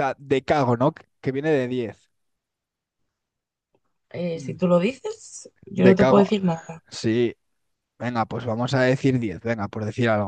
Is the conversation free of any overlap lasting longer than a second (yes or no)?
yes